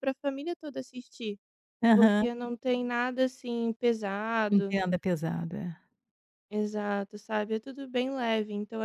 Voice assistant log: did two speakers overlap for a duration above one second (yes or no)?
no